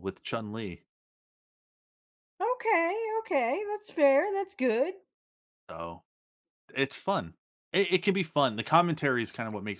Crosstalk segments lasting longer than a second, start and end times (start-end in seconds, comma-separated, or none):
none